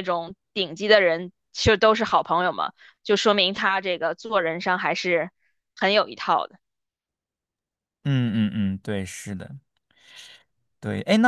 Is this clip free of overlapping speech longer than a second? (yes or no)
yes